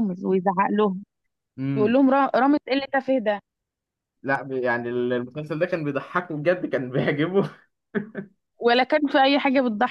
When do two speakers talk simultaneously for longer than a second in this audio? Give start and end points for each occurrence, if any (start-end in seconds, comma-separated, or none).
none